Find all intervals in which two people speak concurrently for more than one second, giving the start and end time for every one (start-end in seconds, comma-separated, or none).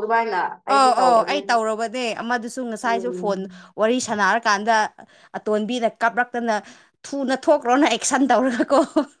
none